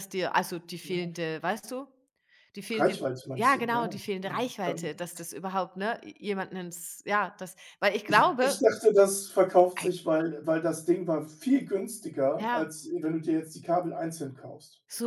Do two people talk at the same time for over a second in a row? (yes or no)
yes